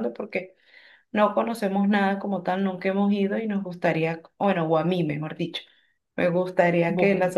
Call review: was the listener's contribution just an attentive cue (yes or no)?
yes